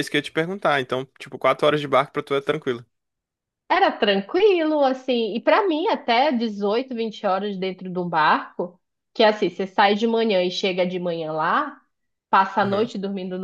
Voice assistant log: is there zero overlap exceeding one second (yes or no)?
yes